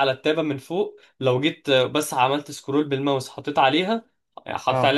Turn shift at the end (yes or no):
no